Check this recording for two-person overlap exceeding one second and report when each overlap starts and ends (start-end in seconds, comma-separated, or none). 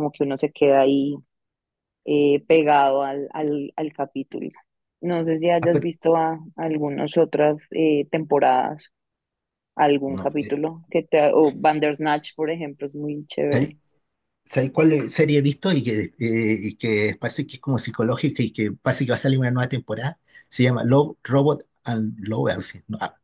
none